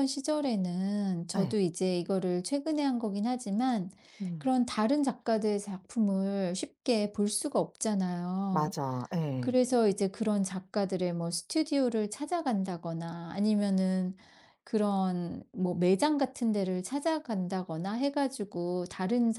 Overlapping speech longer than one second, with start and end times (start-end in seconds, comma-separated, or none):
none